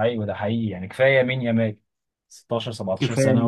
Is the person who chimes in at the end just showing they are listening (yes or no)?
yes